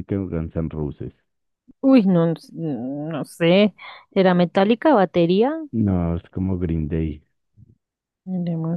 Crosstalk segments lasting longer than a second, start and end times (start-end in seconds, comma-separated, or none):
none